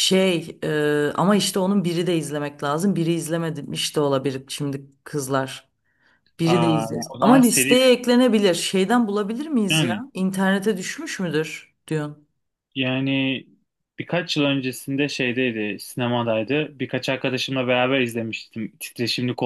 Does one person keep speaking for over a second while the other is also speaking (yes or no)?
yes